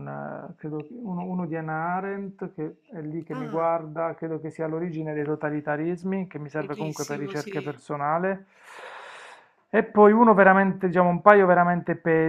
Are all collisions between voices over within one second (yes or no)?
no